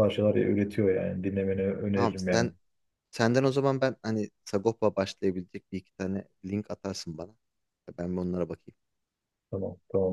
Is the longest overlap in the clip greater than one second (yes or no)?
no